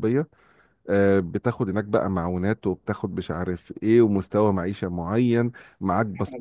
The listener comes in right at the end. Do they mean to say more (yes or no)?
no